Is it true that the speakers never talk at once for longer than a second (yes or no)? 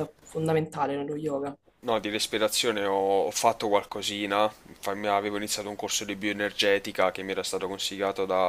yes